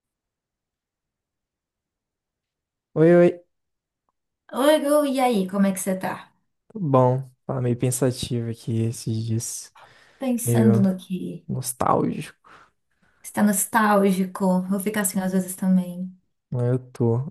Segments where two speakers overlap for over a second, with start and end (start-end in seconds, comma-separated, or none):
none